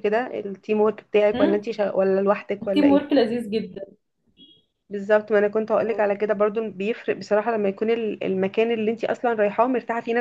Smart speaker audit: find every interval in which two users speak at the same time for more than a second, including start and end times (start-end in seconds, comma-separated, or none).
none